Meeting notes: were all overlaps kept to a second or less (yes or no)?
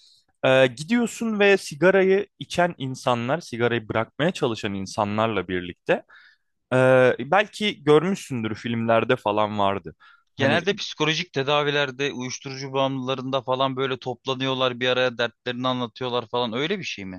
yes